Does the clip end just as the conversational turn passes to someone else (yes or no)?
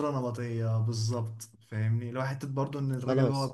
no